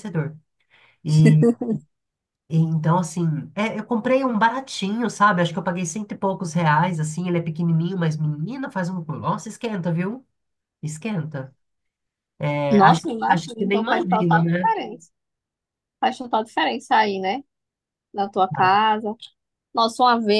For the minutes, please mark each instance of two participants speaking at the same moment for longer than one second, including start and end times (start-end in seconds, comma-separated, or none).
12.7-14.7